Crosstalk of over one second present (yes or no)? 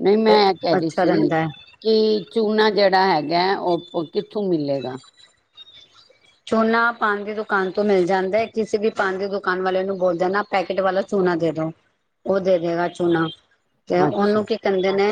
no